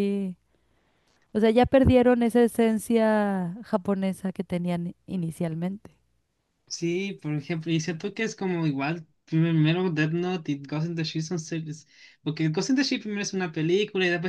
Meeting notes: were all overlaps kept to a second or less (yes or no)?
yes